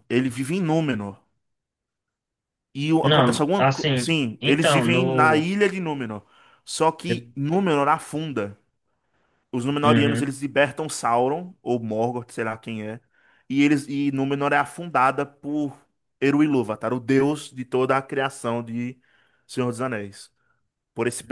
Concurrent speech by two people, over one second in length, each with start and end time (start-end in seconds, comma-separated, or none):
3.0-5.5